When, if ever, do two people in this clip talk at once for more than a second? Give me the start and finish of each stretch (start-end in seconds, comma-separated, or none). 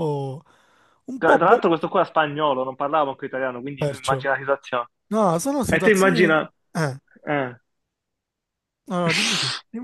none